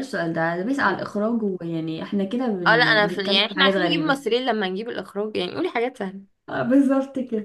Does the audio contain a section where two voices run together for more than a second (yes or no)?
yes